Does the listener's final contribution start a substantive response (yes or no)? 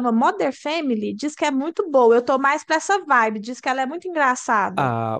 yes